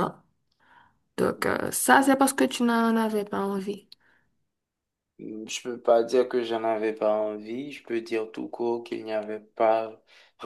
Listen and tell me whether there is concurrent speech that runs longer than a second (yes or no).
no